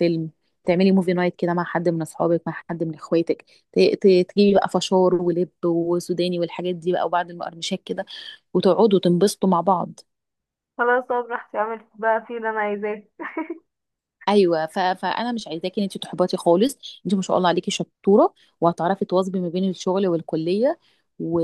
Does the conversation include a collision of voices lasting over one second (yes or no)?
no